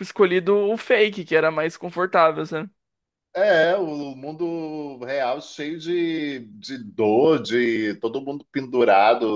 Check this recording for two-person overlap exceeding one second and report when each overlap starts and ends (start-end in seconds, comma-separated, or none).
none